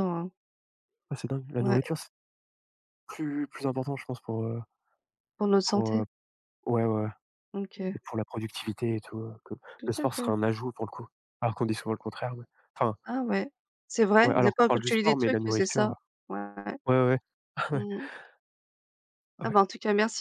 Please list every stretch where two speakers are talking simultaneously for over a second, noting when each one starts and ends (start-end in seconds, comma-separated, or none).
14.2-15.9